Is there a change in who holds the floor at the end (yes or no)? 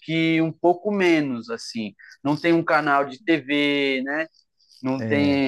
no